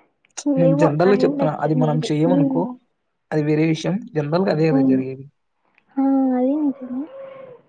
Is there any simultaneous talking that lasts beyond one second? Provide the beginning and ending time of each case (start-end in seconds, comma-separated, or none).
0.7-2.6